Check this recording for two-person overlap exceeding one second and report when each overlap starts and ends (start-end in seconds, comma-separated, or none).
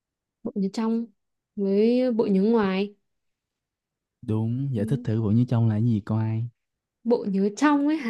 none